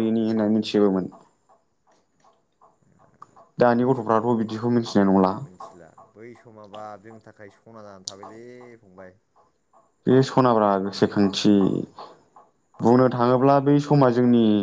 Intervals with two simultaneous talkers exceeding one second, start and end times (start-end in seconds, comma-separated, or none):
none